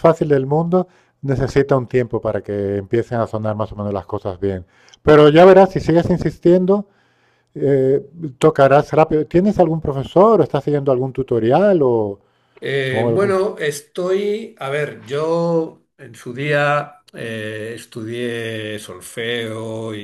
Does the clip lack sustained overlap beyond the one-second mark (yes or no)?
yes